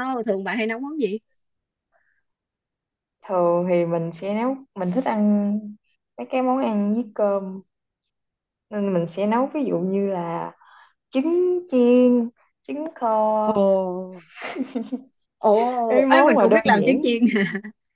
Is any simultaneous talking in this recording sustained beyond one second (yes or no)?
yes